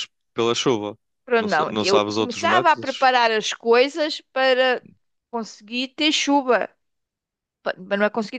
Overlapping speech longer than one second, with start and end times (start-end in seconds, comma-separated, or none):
1.4-3.1